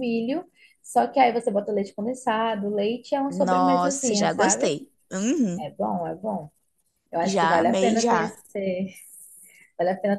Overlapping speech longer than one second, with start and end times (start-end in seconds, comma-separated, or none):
3.3-4.7, 7.2-8.4